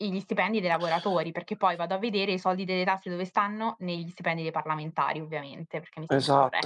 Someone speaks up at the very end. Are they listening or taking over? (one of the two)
taking over